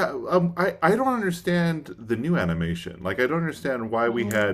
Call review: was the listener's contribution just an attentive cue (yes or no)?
yes